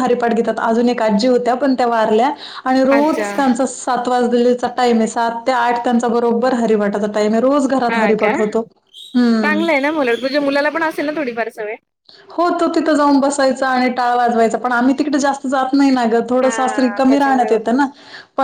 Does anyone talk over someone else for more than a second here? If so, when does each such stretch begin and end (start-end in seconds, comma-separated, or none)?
16.4-17.8